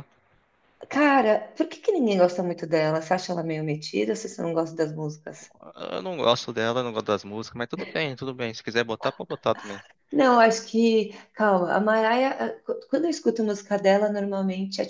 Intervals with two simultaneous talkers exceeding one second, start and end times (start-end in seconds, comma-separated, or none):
none